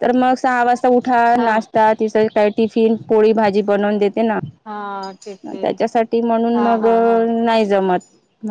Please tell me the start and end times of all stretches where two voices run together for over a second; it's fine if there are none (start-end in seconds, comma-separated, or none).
none